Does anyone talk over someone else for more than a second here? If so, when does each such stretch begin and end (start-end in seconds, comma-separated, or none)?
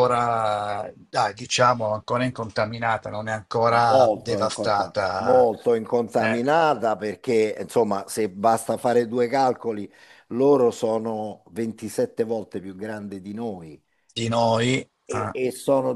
3.9-5.5